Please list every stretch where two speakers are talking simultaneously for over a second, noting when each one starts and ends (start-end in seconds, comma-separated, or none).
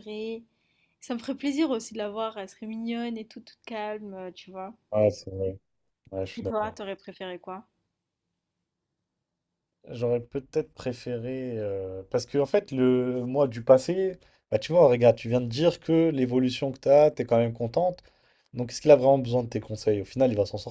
none